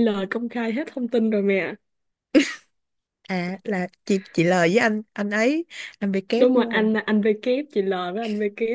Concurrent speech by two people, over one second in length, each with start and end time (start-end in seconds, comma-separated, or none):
none